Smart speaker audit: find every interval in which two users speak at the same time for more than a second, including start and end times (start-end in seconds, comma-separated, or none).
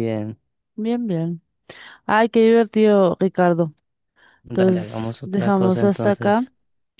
4.5-6.5